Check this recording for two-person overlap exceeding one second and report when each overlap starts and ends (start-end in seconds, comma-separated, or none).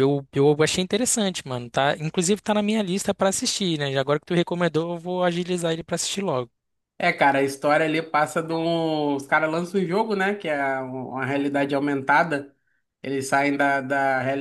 none